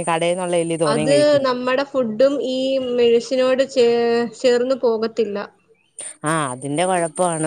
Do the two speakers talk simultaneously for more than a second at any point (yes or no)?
no